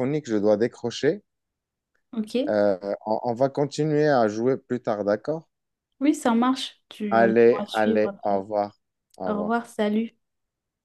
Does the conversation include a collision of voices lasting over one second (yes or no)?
yes